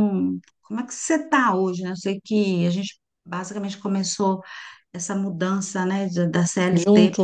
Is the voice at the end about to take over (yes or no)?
no